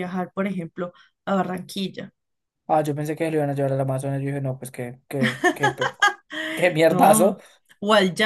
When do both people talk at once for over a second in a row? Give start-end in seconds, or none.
none